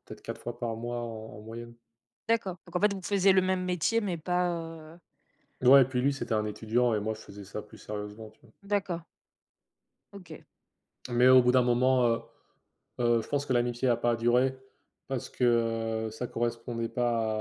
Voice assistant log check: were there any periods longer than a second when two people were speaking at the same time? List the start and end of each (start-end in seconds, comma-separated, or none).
none